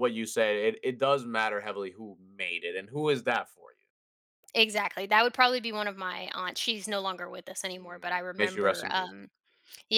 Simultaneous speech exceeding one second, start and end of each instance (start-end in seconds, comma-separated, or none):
7.7-9.1